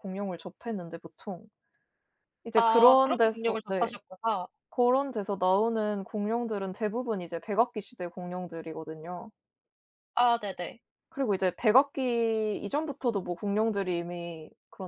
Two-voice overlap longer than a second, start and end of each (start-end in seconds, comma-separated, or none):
2.5-3.9